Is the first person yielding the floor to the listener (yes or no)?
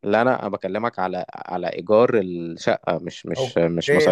yes